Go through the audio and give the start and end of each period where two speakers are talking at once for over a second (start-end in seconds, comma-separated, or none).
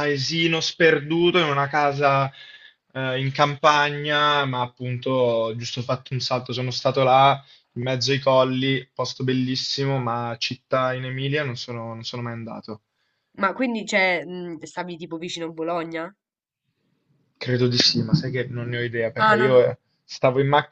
none